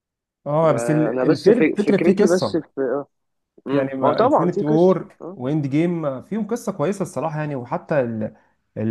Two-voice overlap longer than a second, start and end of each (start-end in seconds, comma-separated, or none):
0.6-2.6, 3.7-5.4